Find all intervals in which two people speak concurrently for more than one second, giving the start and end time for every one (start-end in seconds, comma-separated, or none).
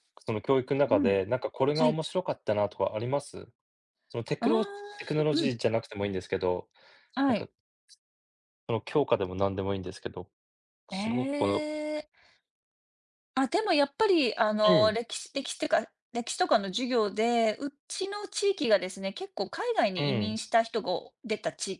none